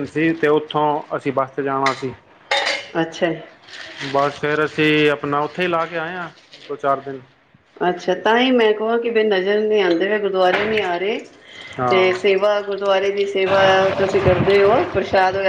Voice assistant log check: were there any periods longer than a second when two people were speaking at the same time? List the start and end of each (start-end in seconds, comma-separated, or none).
none